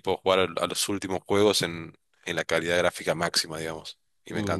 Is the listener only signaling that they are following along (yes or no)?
no